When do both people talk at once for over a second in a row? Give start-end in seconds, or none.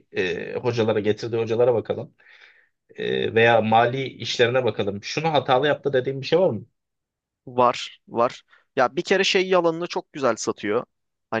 none